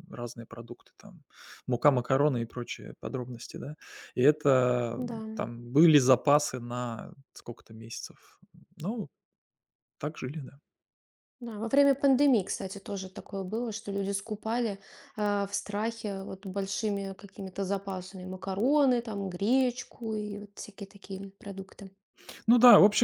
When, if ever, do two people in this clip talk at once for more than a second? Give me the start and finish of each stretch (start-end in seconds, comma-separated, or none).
none